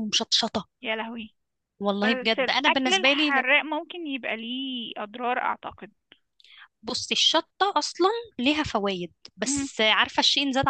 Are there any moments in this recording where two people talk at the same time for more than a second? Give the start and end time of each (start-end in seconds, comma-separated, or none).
2.0-3.5